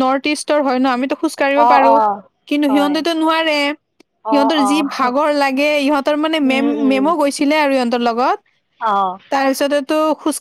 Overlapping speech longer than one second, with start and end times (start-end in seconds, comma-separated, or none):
none